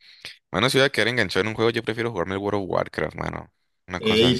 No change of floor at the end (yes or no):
no